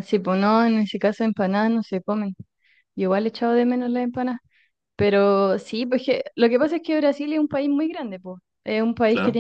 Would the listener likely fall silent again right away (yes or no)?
yes